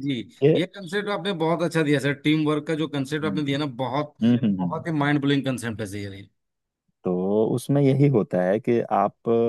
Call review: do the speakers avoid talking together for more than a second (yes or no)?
yes